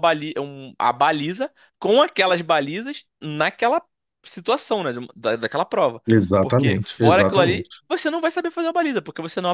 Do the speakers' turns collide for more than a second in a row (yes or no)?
yes